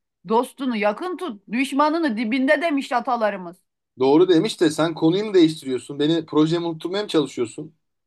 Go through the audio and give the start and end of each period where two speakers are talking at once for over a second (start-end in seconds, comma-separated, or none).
none